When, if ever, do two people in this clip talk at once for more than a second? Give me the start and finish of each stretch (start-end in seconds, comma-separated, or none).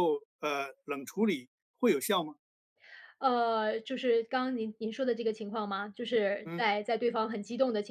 none